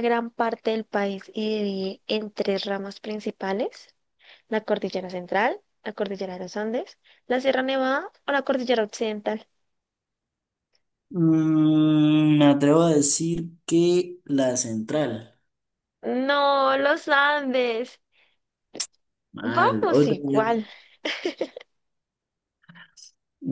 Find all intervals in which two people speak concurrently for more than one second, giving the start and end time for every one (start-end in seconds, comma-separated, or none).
19.4-20.6